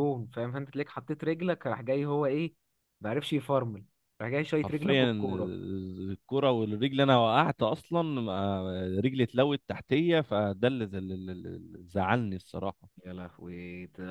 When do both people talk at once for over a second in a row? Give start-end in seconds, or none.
none